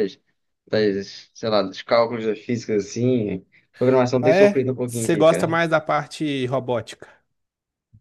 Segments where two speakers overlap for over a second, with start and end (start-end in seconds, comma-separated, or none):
4.2-5.6